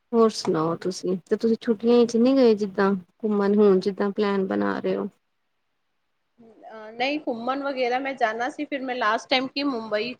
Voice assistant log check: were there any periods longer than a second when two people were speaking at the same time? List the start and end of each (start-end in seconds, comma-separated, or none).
none